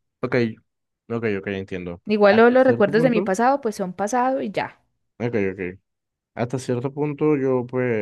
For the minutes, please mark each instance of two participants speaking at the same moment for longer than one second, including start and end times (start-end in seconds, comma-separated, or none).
2.0-3.3